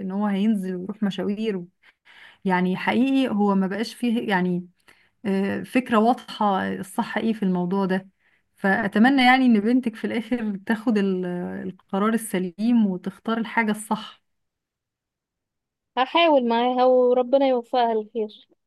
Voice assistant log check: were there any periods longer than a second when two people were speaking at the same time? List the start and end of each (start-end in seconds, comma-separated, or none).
none